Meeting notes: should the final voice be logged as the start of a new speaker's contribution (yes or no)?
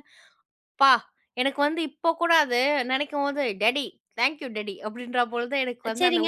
yes